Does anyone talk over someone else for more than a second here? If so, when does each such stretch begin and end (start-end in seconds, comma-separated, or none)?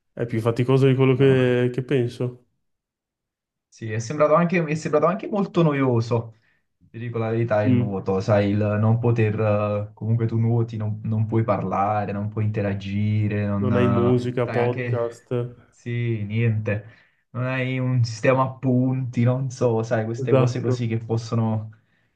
13.6-15.2